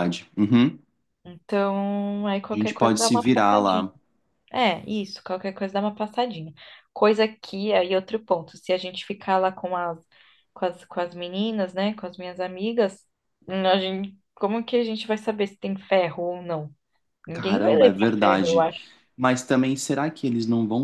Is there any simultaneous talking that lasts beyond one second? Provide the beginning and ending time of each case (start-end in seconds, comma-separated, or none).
2.5-3.9, 17.3-18.6